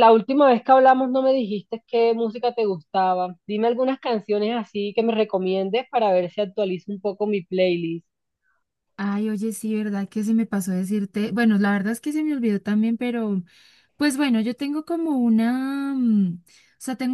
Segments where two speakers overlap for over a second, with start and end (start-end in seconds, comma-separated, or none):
none